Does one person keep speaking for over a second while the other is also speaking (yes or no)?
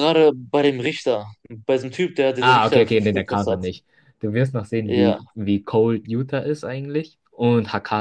yes